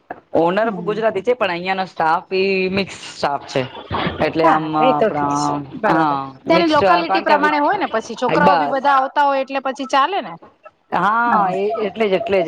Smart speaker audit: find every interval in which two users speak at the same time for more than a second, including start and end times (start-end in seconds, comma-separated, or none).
4.4-7.5